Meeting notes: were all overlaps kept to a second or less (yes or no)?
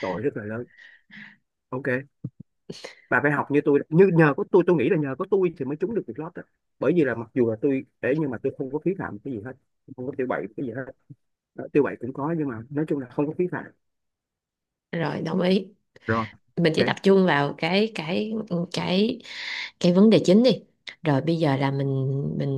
yes